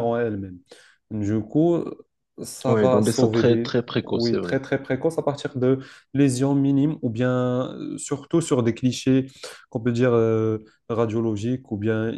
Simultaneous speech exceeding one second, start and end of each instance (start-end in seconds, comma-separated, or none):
2.7-4.6